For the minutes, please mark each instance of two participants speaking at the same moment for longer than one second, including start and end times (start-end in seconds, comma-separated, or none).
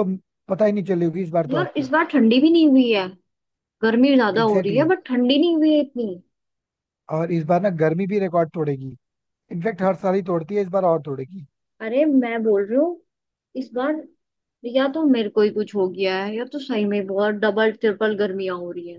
none